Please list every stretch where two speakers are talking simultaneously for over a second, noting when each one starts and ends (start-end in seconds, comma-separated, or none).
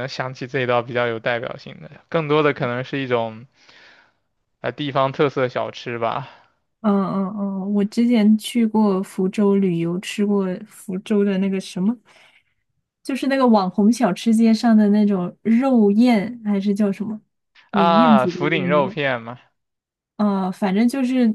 17.7-18.9